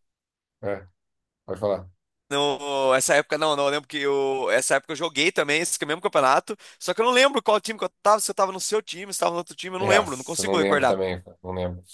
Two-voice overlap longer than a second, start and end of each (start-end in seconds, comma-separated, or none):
9.8-11.0